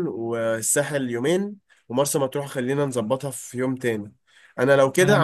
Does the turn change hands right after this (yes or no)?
no